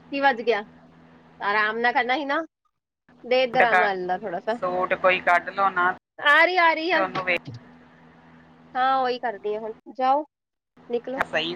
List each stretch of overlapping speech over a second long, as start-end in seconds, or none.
none